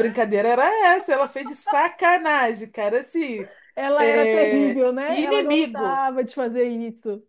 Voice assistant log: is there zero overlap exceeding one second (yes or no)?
no